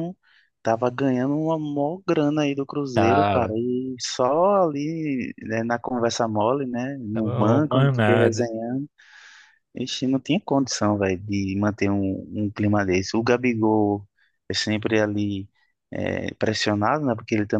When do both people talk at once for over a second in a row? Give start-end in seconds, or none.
7.1-8.5